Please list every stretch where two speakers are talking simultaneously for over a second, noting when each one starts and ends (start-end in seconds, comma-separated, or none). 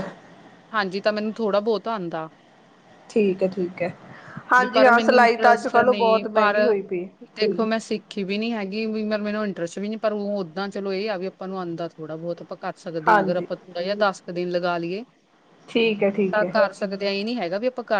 4.6-6.5